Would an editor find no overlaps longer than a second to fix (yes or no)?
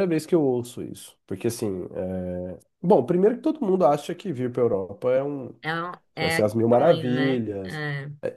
no